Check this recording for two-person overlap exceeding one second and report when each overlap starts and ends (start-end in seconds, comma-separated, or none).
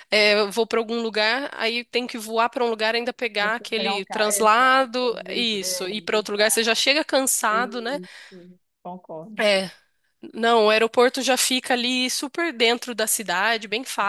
3.4-6.7